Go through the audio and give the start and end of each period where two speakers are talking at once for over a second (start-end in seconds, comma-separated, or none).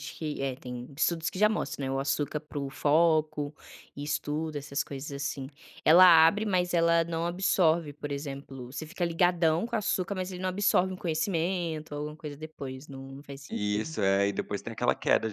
none